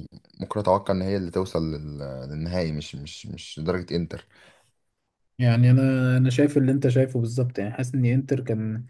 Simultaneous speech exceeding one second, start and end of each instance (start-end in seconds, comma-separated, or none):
none